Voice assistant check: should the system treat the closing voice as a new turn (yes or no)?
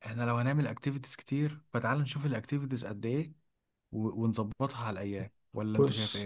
yes